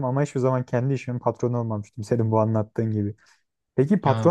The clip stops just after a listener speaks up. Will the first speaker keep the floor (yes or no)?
yes